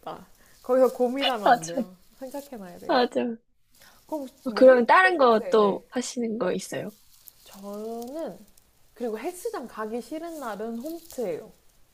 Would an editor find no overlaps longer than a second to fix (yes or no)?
no